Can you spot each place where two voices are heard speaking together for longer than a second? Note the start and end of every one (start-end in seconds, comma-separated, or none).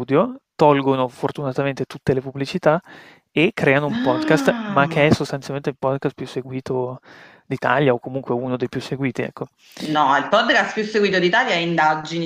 3.9-5.1